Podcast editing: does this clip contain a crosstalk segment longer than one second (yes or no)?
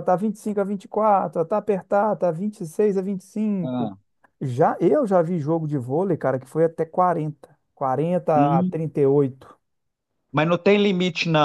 no